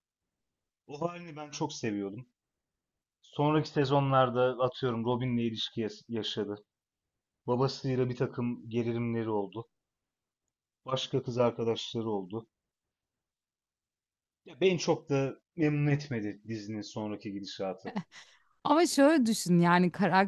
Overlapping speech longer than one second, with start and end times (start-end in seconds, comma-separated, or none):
none